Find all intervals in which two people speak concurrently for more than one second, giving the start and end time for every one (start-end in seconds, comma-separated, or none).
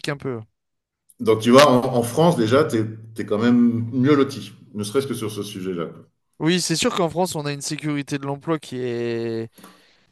none